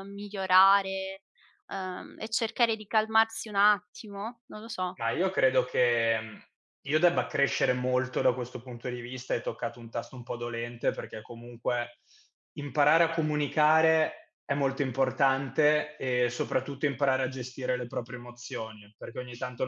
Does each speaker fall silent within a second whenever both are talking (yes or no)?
yes